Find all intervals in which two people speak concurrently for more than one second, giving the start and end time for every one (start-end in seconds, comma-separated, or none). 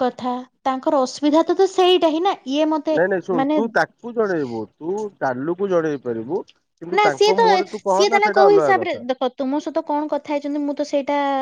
7.0-9.0